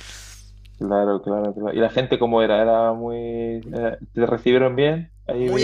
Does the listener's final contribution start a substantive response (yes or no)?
yes